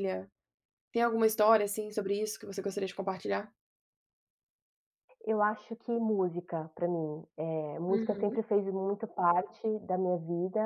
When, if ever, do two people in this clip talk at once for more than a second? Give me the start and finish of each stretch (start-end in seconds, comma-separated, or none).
none